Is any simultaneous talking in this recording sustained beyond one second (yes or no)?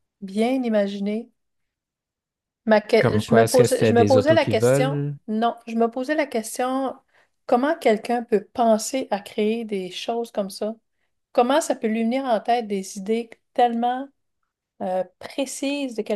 yes